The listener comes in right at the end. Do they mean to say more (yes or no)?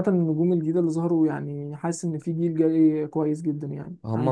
yes